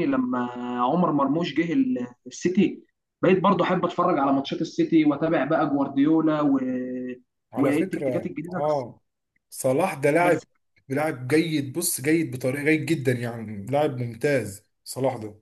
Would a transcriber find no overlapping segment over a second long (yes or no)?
no